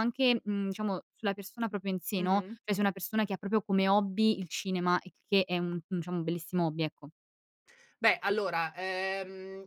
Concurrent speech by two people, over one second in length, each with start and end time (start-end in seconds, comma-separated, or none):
none